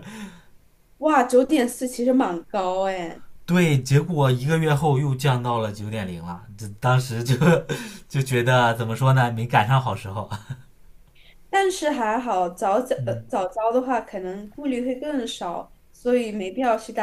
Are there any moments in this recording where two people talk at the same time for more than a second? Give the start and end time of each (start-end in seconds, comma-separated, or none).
none